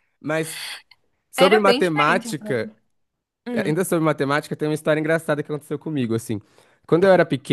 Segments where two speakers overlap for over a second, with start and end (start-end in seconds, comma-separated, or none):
1.4-2.6